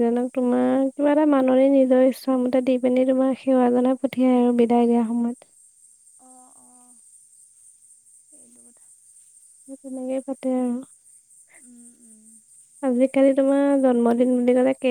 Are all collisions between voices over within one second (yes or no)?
yes